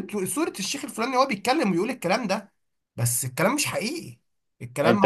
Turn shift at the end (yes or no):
yes